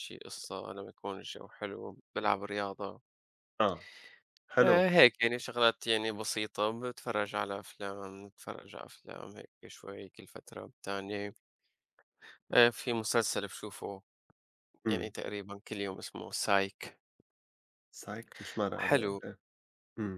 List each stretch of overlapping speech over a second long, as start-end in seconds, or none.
none